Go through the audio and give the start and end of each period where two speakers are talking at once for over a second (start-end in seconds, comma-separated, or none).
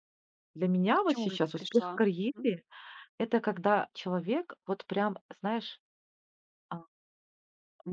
0.9-2.5